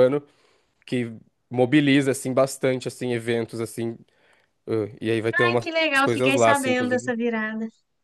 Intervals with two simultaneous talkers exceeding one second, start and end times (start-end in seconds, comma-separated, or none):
5.4-7.1